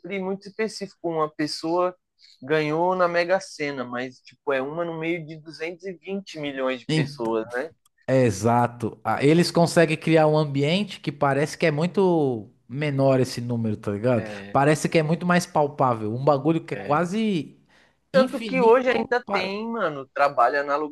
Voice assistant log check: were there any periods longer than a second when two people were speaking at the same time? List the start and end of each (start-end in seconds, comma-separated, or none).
18.1-19.6